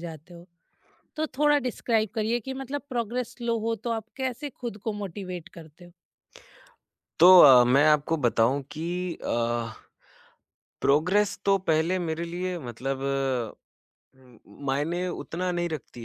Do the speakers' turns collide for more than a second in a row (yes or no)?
no